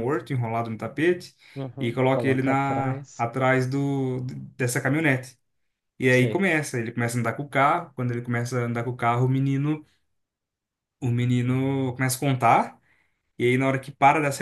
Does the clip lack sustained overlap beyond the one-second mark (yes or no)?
no